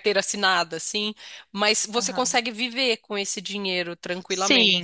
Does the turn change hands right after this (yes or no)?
yes